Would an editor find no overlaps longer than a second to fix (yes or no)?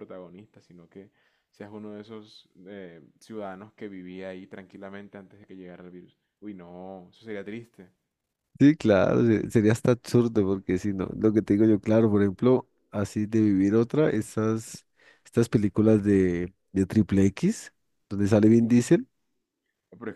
yes